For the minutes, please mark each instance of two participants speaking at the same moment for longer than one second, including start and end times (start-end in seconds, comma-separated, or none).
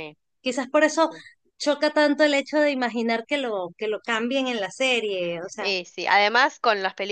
none